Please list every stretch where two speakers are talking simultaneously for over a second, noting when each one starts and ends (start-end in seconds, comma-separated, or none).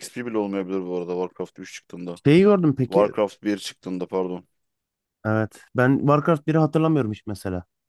none